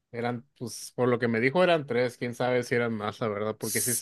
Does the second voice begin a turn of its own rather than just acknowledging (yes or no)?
no